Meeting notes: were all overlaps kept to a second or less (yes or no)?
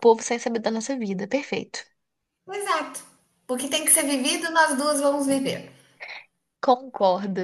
yes